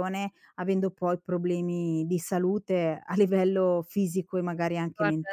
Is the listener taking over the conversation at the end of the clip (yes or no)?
yes